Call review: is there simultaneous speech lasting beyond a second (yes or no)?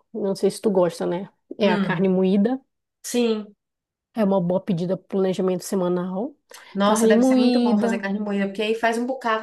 yes